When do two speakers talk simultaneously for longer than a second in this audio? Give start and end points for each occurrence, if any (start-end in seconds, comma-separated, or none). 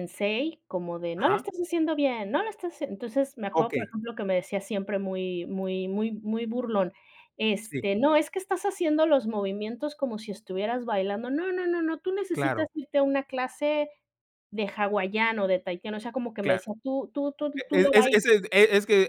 none